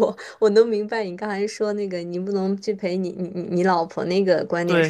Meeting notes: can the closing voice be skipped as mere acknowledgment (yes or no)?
no